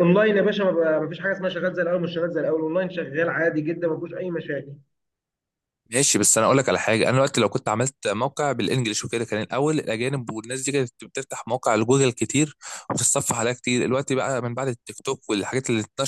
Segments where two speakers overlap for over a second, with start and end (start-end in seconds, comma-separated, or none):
none